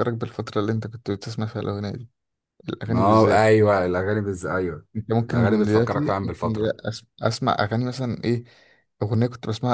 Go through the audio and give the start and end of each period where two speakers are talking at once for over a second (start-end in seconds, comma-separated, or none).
5.3-6.8